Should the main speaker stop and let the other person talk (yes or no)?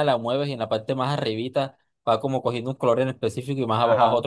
yes